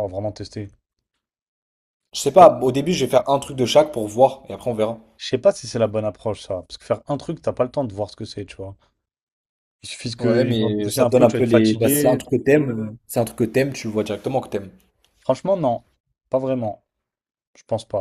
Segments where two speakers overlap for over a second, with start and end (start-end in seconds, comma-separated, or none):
10.2-12.2